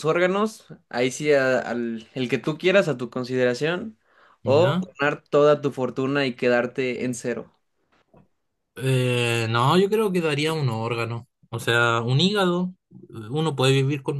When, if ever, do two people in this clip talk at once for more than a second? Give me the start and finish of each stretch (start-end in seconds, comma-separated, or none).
none